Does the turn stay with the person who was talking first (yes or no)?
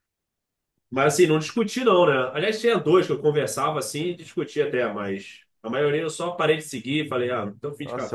no